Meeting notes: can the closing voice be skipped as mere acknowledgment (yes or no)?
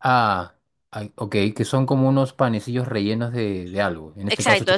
no